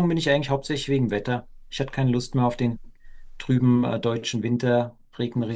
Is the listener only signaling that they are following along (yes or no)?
no